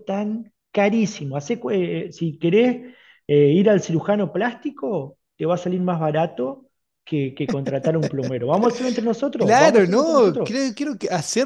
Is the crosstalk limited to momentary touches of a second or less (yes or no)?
no